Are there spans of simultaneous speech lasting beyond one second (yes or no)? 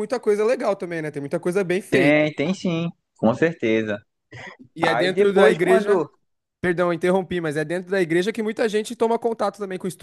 yes